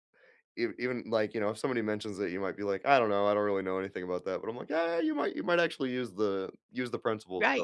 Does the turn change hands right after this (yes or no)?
yes